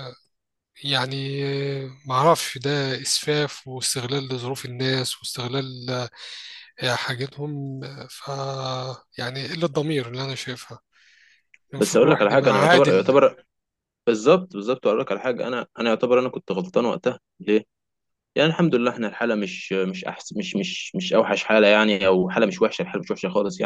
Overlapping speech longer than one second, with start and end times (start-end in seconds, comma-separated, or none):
11.8-13.2